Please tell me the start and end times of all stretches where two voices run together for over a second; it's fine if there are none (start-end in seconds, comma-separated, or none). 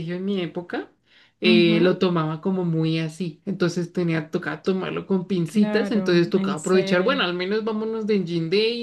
5.5-7.3